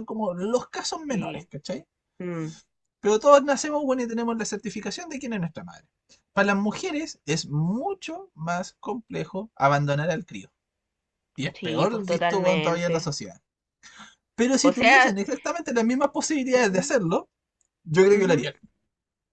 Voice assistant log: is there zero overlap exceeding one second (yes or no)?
no